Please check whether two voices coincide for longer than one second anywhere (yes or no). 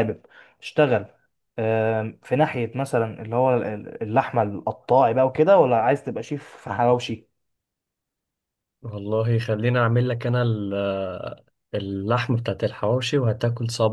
no